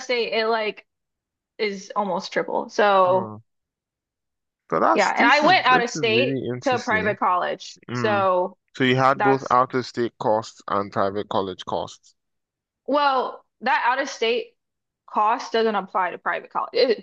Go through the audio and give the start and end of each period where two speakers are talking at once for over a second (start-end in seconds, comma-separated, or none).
4.9-7.2